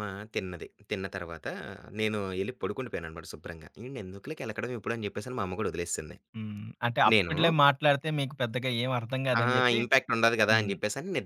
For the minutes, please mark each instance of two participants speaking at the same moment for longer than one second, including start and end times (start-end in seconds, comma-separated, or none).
none